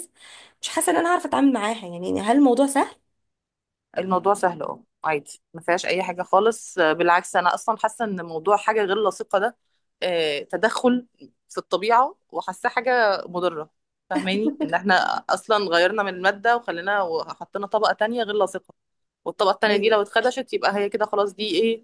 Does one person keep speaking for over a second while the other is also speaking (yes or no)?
no